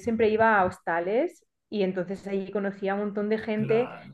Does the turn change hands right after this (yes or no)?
no